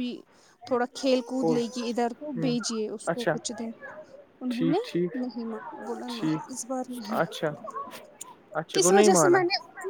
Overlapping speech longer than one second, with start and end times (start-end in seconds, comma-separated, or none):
5.9-7.2